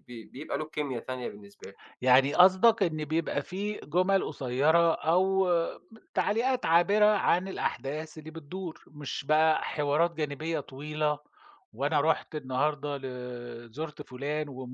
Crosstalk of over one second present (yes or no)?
no